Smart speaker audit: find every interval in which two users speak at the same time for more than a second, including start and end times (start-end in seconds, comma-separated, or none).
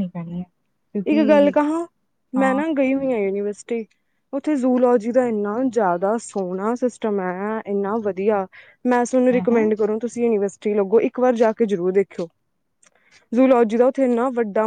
none